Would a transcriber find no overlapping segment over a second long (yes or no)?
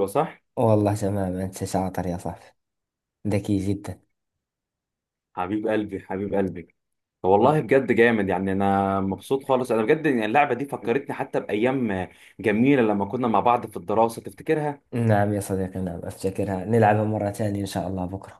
yes